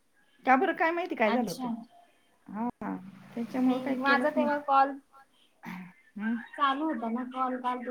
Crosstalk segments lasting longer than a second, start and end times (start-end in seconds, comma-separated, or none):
none